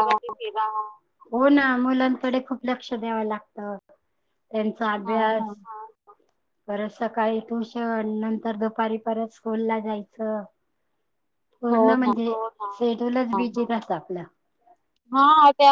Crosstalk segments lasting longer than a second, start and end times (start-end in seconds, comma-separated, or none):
none